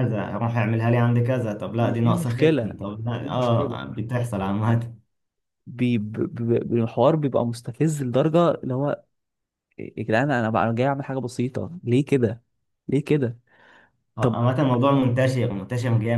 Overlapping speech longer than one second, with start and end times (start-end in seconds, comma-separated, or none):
1.7-3.8